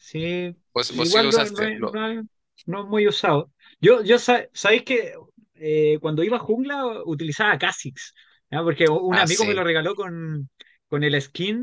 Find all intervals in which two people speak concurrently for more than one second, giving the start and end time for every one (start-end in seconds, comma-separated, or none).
0.7-2.0